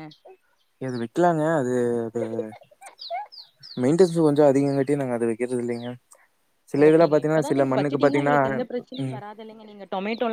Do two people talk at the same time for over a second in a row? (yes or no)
yes